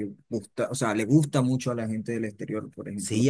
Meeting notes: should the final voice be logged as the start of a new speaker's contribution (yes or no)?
yes